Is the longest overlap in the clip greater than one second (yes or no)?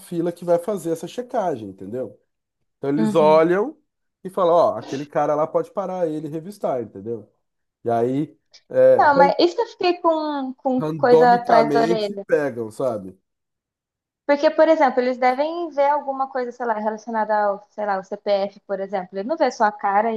yes